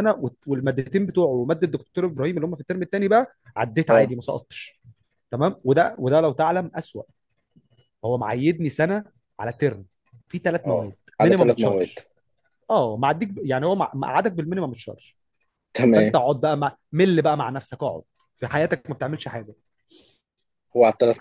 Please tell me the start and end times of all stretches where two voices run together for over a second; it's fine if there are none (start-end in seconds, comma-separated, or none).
10.6-12.0